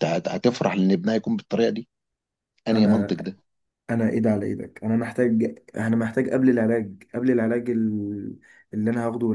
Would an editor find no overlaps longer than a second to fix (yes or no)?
yes